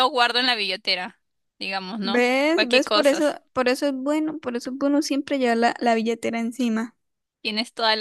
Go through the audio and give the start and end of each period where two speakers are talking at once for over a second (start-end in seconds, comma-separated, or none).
2.0-3.4